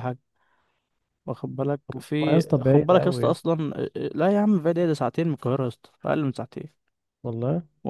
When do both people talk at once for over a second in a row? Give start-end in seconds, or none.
2.0-3.5